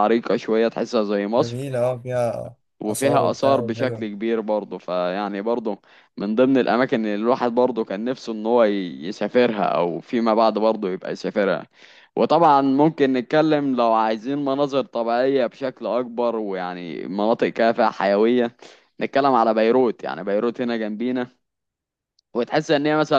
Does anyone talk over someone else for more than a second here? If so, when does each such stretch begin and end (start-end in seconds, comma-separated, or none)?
2.8-4.1